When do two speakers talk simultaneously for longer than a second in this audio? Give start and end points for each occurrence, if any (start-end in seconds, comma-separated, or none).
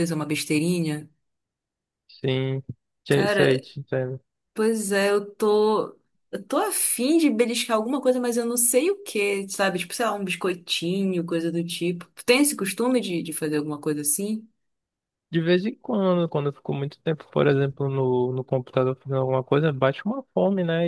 none